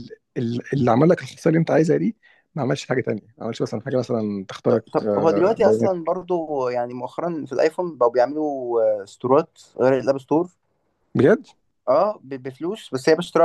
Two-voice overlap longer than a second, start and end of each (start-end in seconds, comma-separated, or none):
4.7-6.1